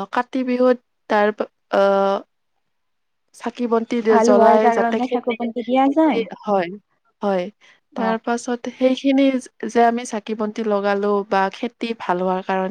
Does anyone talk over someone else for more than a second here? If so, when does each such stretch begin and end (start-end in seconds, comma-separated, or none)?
4.1-6.2